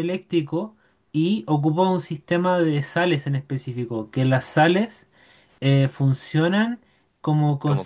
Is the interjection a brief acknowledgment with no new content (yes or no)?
yes